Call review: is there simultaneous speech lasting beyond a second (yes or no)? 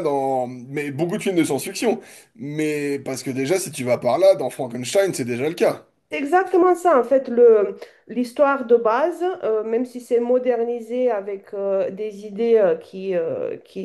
no